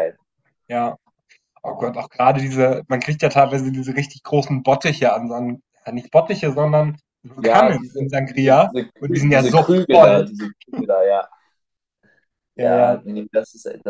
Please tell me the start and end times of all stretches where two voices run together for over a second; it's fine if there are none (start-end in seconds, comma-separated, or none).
7.4-10.3